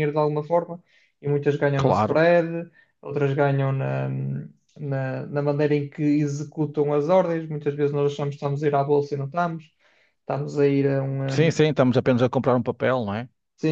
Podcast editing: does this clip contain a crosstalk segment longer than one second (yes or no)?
no